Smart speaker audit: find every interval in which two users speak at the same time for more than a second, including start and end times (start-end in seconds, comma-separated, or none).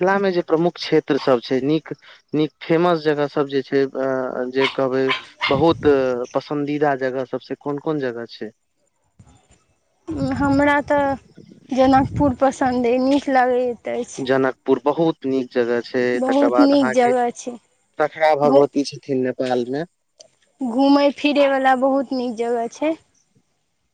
16.2-17.6